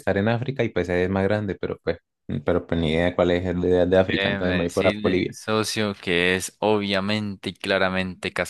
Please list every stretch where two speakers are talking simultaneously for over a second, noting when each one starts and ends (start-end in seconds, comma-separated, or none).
4.1-5.3